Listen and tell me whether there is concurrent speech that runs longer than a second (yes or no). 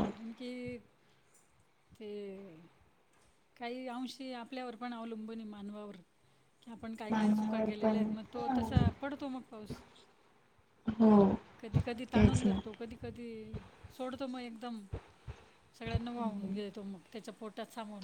yes